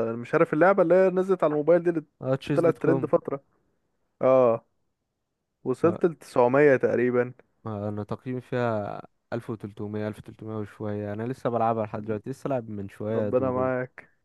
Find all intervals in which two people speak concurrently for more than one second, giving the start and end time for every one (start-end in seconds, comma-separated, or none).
none